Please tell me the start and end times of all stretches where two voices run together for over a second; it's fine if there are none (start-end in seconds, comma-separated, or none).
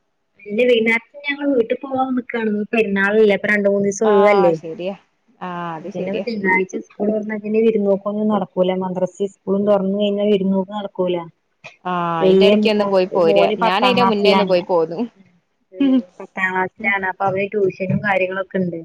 12.2-14.5